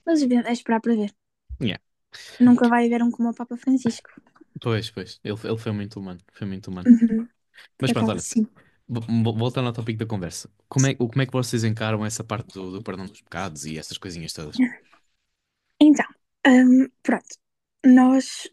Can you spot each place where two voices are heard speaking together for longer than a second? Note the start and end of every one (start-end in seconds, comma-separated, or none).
none